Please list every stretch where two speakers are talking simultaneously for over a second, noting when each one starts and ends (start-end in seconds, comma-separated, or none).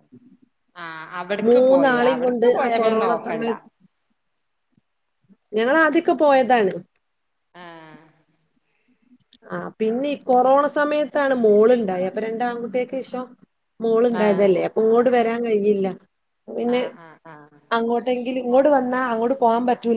1.5-3.5